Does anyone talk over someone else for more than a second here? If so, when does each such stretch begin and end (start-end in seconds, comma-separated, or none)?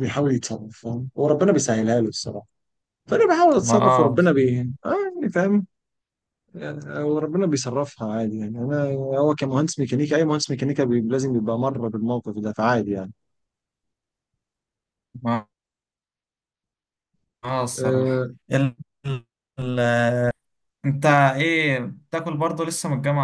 none